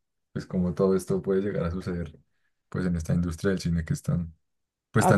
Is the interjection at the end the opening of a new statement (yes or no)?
yes